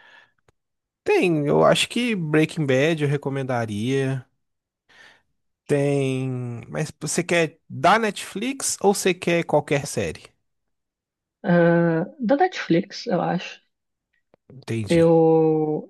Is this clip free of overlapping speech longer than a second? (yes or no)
yes